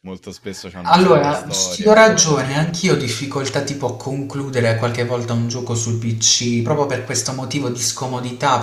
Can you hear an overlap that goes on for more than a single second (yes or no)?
yes